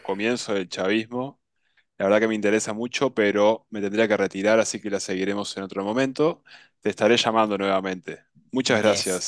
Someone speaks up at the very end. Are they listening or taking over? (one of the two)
taking over